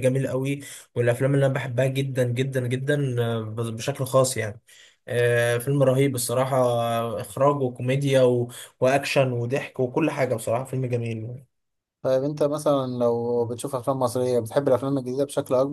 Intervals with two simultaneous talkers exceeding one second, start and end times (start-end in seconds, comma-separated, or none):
none